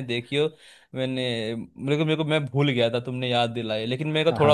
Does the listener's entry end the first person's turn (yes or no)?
yes